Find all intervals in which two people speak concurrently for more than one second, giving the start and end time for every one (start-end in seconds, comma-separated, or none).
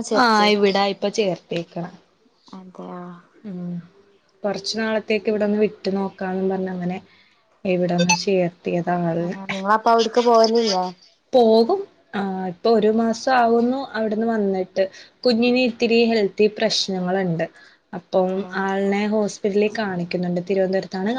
none